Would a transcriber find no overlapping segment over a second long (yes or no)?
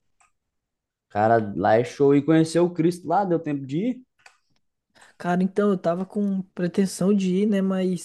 yes